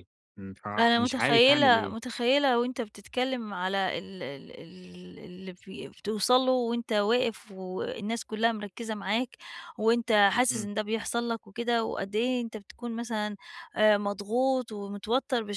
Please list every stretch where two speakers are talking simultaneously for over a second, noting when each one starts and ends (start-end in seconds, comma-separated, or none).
0.8-2.0